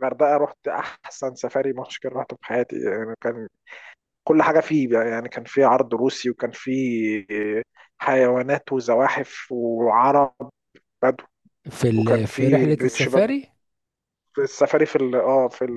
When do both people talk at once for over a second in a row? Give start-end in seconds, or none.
11.9-13.3